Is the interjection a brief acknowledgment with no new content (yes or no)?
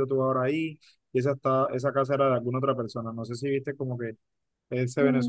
no